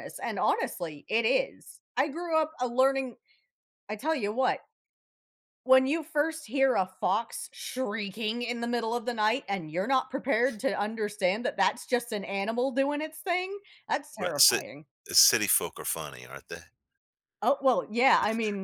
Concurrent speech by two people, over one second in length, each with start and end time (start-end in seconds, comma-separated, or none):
none